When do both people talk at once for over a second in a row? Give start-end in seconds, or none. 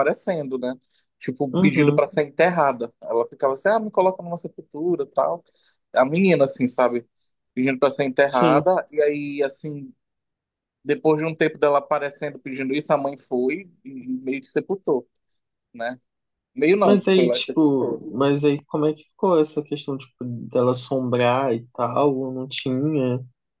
16.8-18.3